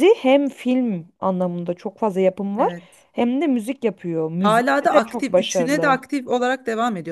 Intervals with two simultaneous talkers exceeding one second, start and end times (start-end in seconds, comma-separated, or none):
4.4-6.0